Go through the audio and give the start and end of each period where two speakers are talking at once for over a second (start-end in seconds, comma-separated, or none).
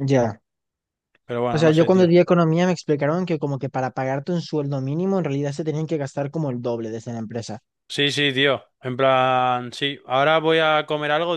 none